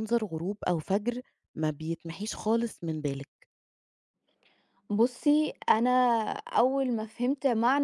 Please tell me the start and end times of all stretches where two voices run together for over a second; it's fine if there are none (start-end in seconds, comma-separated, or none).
none